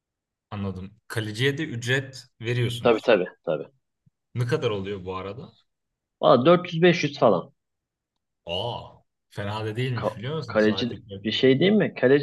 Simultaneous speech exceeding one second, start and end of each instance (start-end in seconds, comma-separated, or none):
9.9-11.7